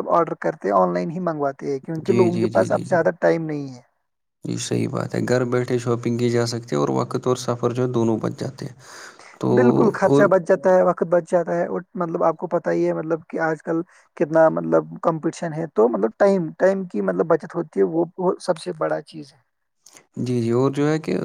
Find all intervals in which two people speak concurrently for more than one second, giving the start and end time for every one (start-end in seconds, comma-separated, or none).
none